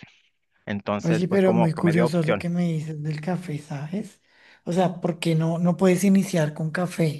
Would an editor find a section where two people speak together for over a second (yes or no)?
yes